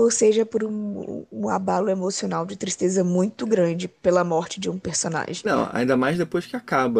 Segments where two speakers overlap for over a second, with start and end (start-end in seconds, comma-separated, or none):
none